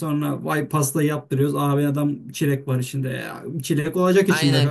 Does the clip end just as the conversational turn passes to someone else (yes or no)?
yes